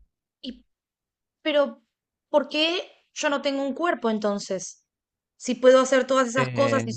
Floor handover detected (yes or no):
no